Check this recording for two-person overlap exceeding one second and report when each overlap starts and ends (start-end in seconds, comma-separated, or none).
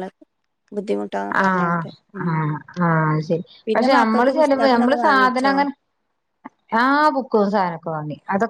3.7-5.5